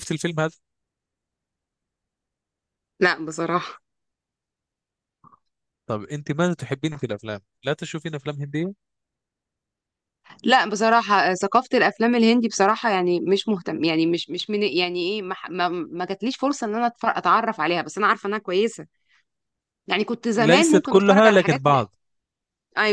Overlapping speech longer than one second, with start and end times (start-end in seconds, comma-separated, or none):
20.4-21.8